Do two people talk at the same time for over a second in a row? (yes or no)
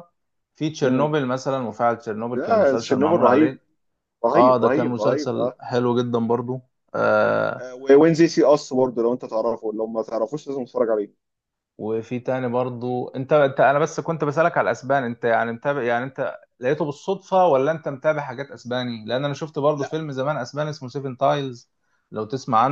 yes